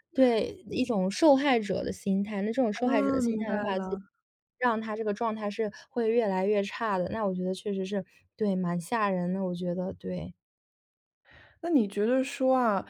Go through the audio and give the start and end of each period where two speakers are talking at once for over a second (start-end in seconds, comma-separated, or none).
2.7-3.9